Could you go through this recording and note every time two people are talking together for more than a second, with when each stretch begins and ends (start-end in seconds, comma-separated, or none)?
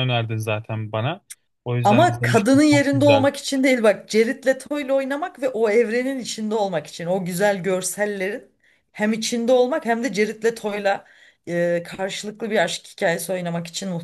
1.8-3.3